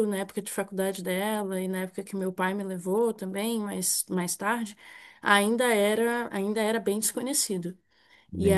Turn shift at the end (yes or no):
yes